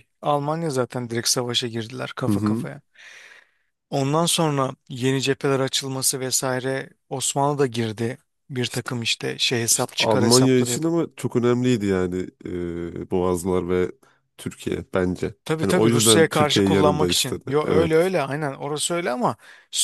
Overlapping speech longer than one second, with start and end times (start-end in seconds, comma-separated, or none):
9.7-10.9, 15.4-18.1